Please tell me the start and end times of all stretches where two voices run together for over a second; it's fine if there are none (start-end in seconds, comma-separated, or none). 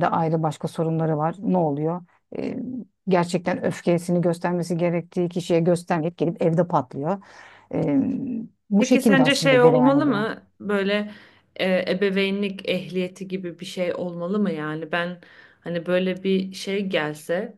8.8-10.2